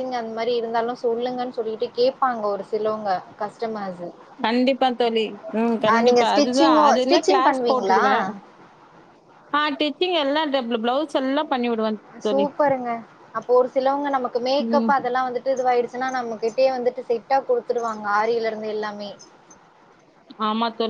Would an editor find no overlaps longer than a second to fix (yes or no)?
no